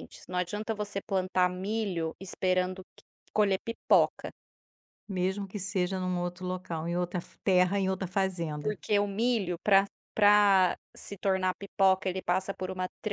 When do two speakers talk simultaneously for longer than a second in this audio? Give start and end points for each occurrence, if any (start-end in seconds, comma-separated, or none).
none